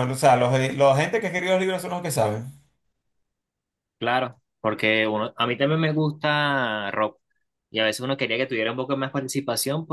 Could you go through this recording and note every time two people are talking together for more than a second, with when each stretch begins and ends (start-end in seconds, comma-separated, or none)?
none